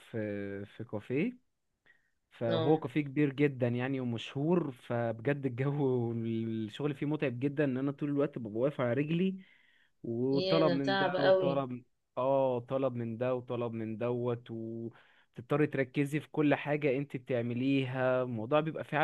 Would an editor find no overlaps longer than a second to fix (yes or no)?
no